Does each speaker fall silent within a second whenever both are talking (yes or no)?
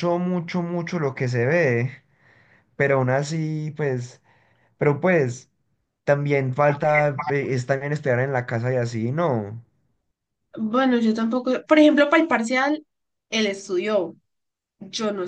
yes